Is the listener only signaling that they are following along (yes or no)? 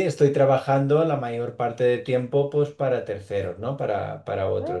no